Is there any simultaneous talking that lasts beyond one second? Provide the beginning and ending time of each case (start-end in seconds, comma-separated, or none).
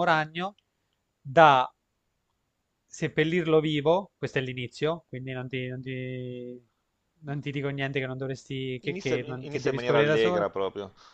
8.9-10.5